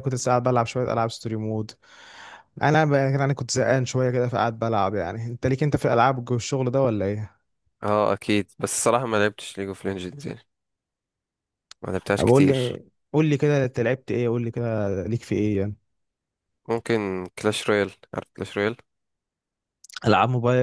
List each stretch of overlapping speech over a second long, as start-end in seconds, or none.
none